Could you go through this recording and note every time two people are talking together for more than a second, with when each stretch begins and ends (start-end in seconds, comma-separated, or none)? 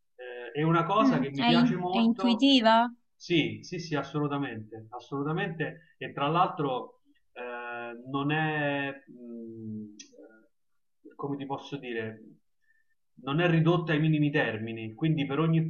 1.0-2.5